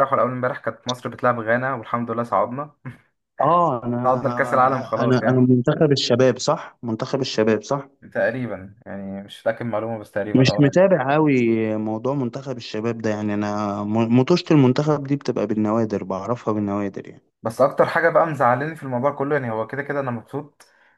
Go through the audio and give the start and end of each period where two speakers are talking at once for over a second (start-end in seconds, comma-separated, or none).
4.1-5.5